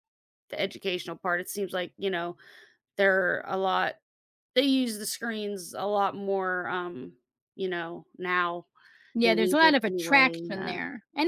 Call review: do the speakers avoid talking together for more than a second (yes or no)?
no